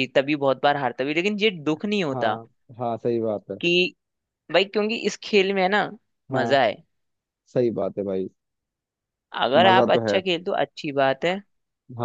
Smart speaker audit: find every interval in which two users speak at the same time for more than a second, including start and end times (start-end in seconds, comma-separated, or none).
none